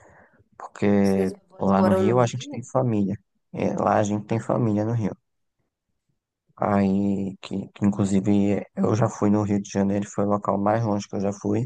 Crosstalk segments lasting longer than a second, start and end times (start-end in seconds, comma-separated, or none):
1.0-2.7